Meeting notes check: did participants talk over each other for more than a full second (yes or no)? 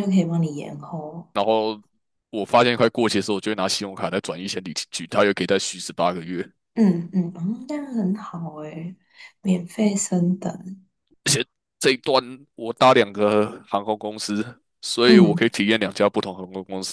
no